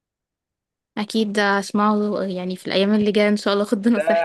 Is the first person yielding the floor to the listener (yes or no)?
yes